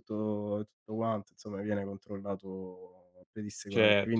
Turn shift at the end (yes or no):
yes